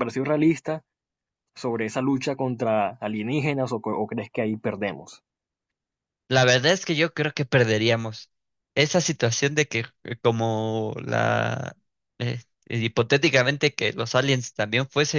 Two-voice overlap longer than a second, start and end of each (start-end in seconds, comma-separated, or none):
none